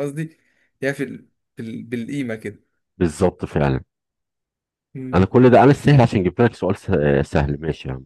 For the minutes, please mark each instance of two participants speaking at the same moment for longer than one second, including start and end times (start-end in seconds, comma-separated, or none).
none